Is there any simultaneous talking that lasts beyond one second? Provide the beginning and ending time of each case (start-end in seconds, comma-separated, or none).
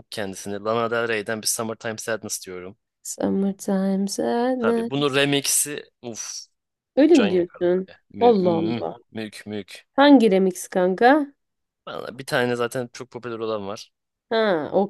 7.1-9.0